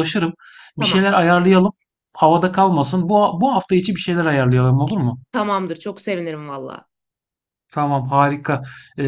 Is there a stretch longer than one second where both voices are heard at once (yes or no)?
no